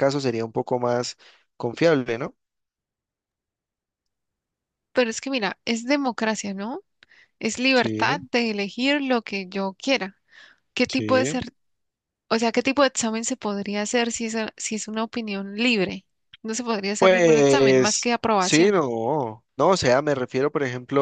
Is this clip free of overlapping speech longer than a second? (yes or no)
no